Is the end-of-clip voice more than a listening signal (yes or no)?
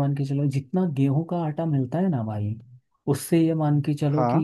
no